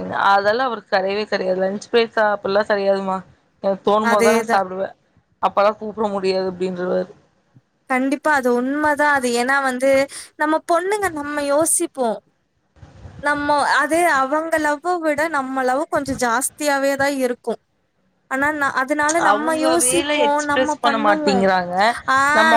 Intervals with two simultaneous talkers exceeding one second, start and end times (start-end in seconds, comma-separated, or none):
19.3-21.4